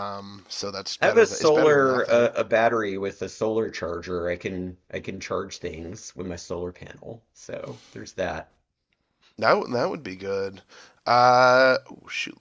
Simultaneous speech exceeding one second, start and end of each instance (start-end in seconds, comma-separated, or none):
1.0-2.3